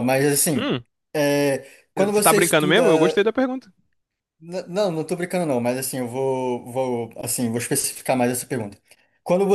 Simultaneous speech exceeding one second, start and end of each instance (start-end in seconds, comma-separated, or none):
1.9-3.2